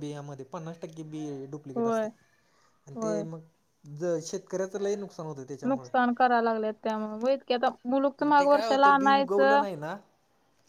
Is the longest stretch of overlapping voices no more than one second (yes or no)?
no